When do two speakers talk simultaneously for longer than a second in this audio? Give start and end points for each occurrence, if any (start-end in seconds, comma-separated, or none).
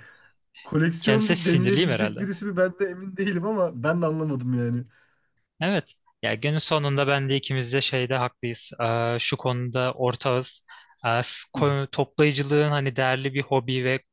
1.0-2.2